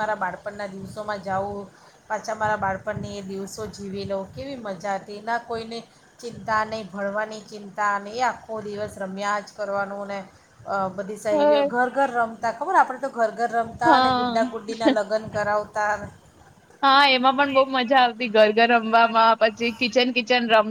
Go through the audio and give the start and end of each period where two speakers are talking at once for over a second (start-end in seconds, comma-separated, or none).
none